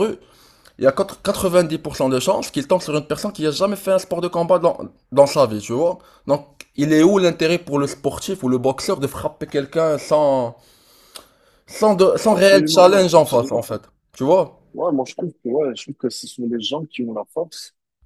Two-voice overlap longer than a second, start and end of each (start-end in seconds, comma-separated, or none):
12.3-13.6